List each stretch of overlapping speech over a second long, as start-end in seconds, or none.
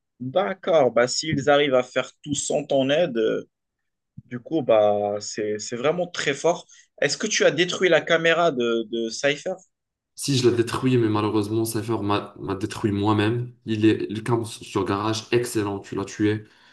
none